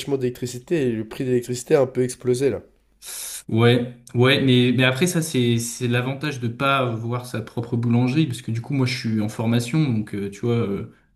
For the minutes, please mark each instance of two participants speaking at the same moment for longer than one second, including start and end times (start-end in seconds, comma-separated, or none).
none